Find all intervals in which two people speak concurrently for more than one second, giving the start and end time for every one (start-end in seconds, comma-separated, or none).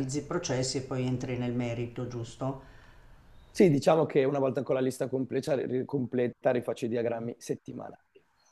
none